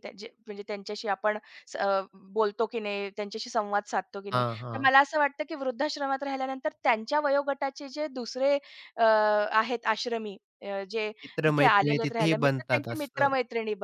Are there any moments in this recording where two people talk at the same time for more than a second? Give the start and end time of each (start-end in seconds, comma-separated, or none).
11.5-13.3